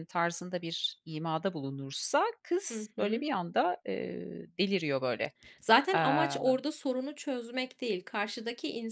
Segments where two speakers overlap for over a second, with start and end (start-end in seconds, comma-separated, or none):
none